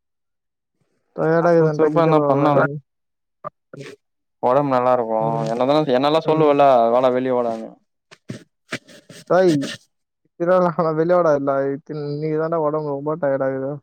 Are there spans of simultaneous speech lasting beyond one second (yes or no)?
yes